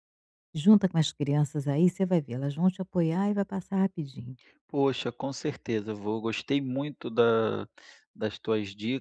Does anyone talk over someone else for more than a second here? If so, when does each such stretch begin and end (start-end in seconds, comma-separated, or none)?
none